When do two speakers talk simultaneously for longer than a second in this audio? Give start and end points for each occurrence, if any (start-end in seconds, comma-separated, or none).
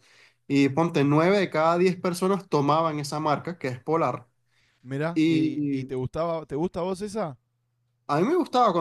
none